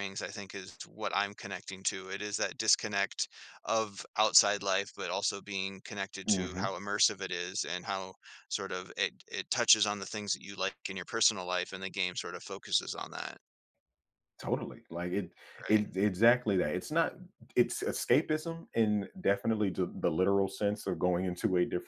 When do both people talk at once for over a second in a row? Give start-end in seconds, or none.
none